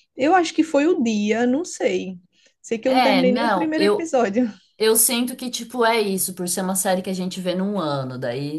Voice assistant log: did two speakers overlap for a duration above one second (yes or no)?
yes